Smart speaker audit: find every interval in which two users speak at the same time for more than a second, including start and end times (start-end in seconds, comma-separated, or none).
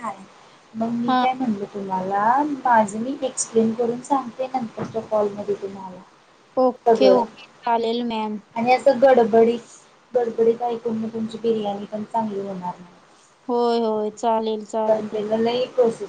none